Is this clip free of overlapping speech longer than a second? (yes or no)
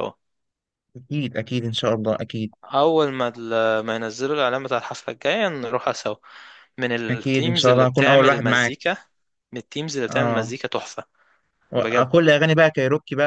no